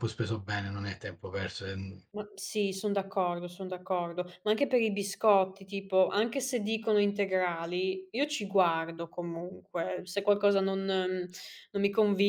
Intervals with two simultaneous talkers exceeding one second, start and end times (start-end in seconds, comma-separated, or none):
none